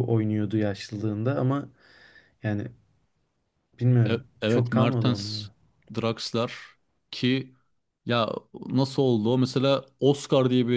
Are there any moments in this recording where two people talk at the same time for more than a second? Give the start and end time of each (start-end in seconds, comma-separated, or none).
4.1-5.5